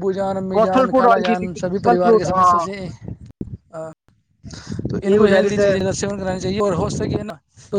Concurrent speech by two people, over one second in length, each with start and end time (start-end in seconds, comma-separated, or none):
0.6-2.6